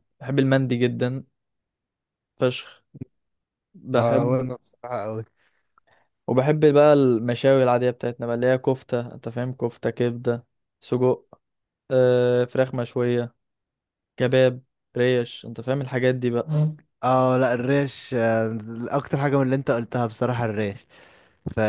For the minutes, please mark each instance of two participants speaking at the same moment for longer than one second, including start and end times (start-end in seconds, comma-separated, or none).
none